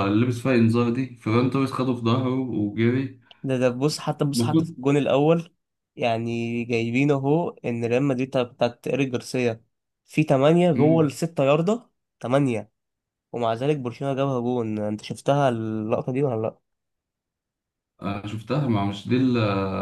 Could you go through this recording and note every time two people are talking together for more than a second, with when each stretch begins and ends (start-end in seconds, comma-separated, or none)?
none